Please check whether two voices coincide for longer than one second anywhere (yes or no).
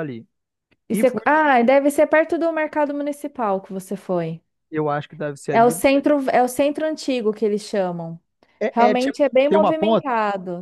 yes